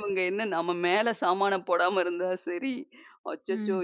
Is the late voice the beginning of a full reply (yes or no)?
no